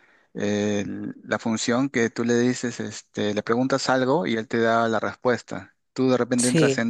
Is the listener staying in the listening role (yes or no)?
yes